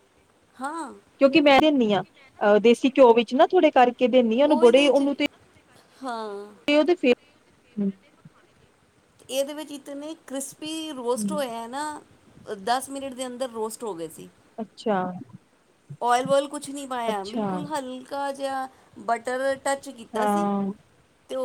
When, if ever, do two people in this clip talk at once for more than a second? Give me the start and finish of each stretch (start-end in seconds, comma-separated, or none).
none